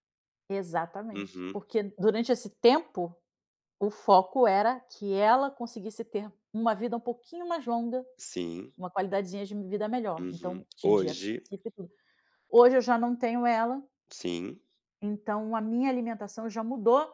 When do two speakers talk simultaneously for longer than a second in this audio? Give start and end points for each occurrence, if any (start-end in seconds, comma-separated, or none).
10.2-11.5